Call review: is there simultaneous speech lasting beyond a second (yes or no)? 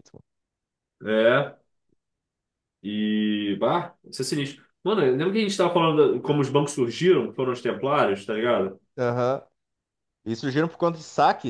no